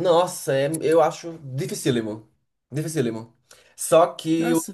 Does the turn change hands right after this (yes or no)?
no